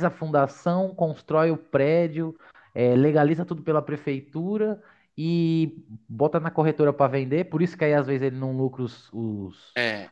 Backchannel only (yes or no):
yes